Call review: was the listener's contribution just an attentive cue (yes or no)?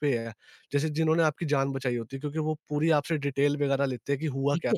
no